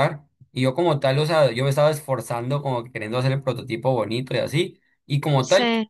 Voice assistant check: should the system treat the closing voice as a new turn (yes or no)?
no